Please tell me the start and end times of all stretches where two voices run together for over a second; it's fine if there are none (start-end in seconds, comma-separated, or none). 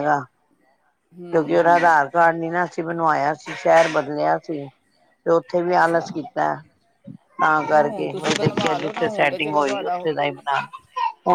7.6-10.1